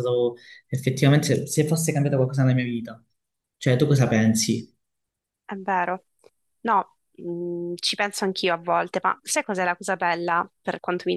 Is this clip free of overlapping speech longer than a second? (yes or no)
yes